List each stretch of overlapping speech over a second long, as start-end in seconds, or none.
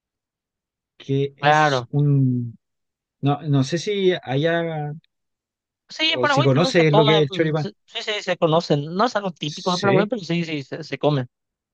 6.1-7.7